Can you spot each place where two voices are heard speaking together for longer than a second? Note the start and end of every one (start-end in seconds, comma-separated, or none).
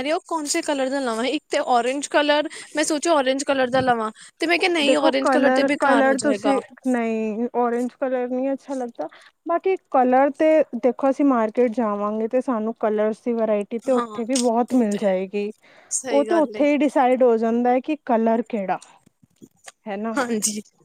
4.9-6.5